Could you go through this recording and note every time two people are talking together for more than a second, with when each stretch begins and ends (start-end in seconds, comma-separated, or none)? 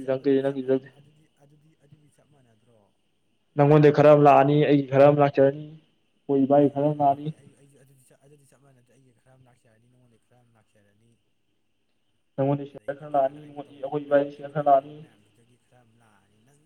12.8-15.0